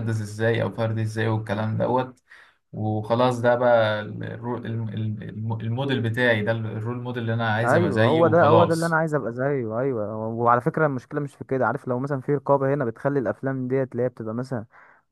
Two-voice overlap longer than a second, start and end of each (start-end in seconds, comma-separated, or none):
7.6-9.0